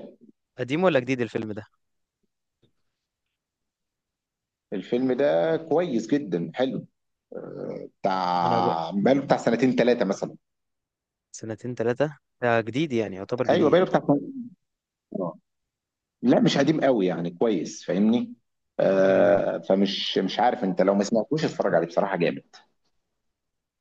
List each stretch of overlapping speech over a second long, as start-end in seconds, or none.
none